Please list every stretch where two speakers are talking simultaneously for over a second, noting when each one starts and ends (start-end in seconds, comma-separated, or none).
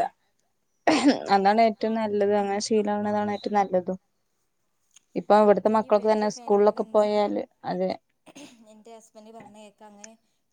5.5-7.1